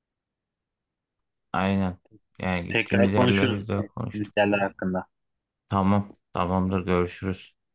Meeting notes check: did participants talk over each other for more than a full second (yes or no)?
yes